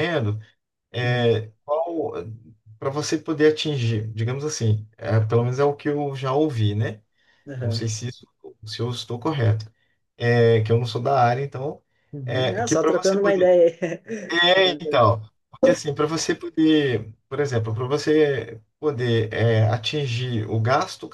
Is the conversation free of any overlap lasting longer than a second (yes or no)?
no